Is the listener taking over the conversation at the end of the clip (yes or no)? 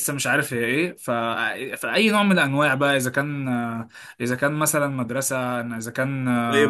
yes